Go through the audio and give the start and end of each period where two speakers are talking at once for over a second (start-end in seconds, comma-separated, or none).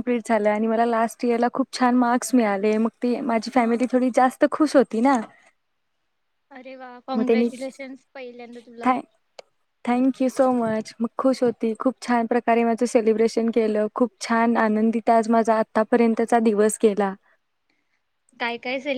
none